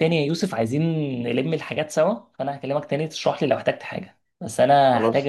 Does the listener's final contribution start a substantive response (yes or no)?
no